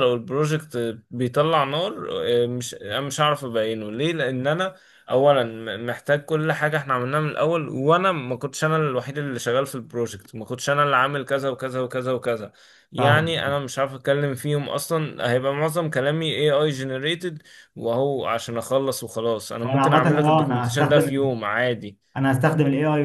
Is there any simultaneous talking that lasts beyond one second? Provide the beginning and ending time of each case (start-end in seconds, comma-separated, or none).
19.6-21.3